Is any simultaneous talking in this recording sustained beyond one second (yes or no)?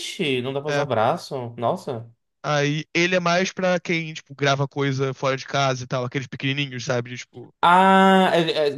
no